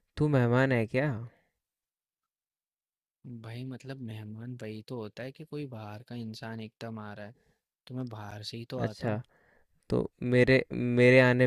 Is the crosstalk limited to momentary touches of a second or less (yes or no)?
yes